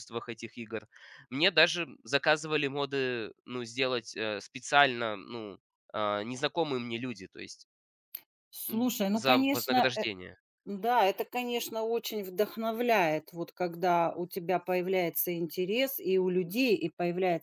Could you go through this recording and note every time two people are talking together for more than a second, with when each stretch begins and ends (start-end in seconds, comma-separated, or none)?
8.7-10.1